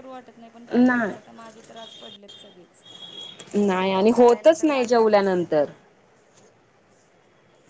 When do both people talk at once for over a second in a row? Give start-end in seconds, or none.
4.1-5.6